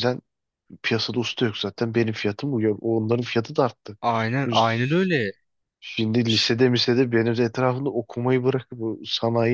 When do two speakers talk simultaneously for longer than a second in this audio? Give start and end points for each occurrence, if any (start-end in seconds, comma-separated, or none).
none